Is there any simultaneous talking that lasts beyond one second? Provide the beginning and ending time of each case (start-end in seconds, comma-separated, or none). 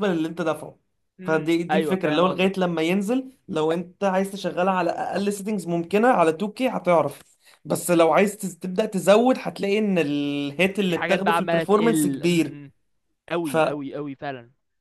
1.2-2.7, 10.9-12.6